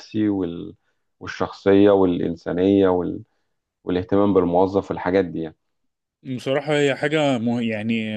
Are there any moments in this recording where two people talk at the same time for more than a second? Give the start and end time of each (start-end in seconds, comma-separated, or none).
none